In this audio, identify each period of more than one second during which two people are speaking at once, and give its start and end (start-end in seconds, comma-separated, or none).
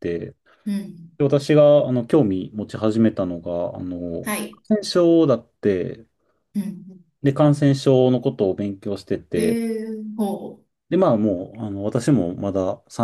none